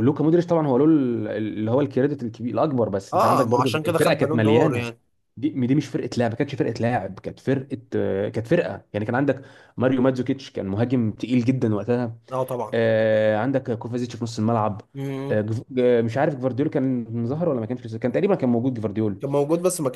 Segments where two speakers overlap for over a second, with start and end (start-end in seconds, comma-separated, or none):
3.1-4.9